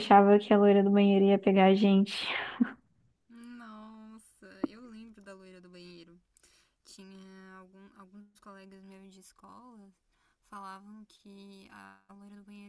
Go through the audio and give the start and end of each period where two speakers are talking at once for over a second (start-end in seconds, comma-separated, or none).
none